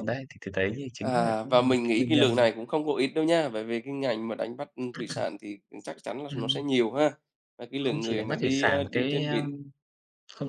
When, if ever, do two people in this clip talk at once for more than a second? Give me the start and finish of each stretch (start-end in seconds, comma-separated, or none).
1.0-2.5, 7.8-9.4